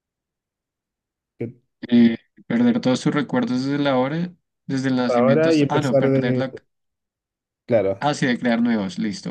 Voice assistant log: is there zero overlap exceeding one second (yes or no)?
no